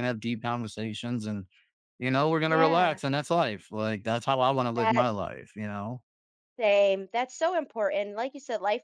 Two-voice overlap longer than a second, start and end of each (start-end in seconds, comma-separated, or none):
none